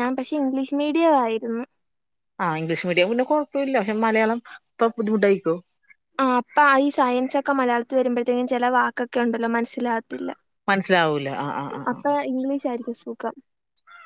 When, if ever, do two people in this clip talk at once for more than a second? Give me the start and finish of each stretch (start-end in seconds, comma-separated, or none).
none